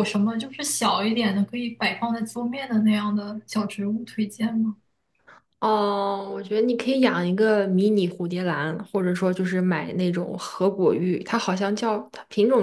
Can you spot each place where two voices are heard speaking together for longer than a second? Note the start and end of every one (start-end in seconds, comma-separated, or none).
none